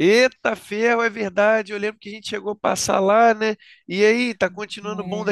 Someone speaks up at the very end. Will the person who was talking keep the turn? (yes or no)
no